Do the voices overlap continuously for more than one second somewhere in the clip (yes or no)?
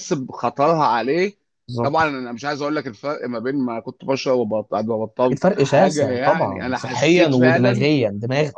yes